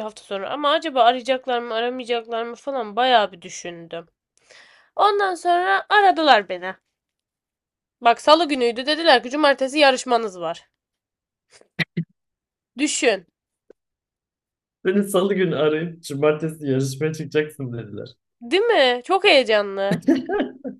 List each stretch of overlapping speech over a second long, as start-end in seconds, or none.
none